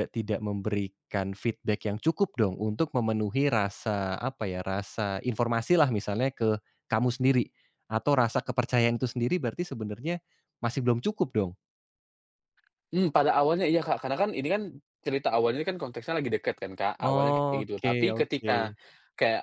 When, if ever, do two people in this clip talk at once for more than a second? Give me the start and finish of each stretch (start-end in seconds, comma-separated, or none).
17.1-18.5